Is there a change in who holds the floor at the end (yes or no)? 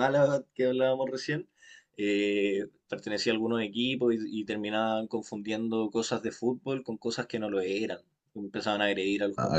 no